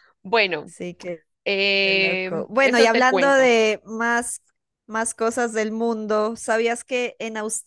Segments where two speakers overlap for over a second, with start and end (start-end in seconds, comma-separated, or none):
1.8-3.5